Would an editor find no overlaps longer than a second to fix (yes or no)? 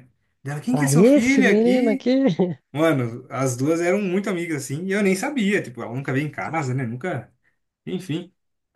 no